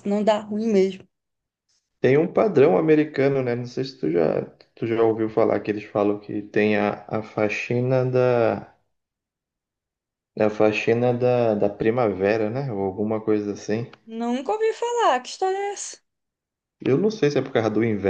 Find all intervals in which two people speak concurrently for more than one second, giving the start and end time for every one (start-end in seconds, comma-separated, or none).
none